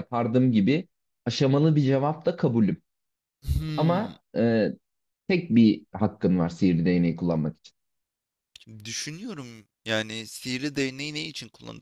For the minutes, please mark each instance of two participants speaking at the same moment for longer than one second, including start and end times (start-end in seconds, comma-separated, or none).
none